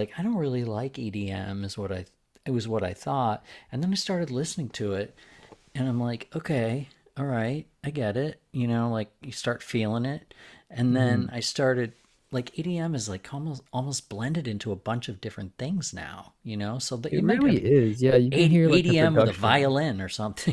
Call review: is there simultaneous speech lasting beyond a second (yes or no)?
yes